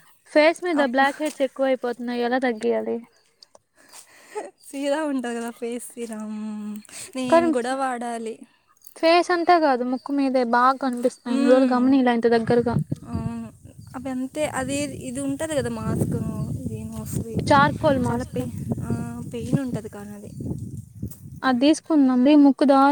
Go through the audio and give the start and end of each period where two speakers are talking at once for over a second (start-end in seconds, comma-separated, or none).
none